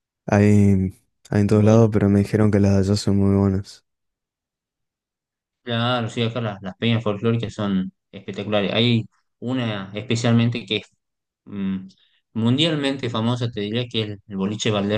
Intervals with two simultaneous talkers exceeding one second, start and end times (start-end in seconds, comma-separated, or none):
none